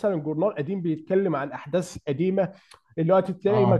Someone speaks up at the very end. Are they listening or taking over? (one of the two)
listening